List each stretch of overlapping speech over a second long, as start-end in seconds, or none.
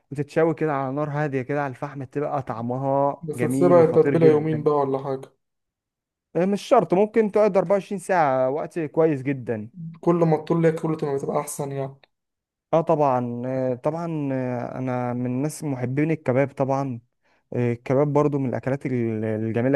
3.2-4.8